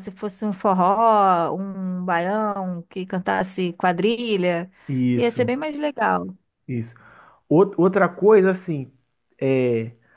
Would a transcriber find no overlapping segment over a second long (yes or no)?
yes